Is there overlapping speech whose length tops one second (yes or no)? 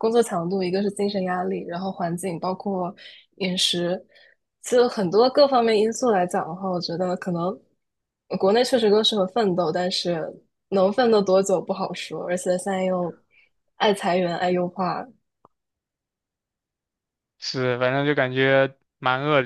no